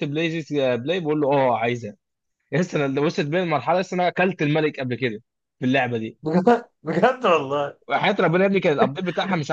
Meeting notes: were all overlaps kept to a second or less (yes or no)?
yes